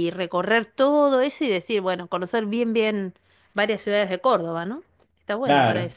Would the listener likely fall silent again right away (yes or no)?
no